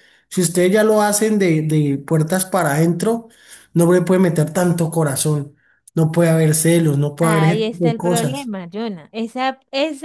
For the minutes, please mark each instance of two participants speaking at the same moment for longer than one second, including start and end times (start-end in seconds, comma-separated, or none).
7.2-8.5